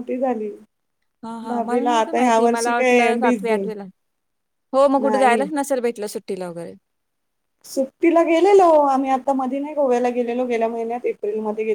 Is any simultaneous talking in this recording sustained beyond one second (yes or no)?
yes